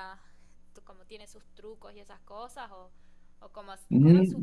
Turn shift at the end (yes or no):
yes